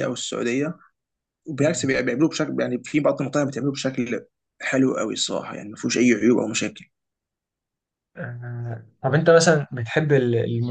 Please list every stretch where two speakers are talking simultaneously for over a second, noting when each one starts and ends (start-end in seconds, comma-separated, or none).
none